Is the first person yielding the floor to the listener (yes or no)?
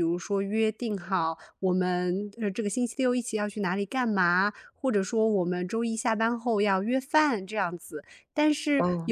no